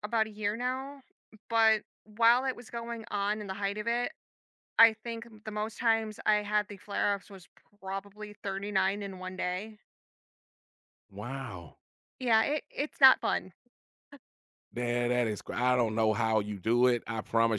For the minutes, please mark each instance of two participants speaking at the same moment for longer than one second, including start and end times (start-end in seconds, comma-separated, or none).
none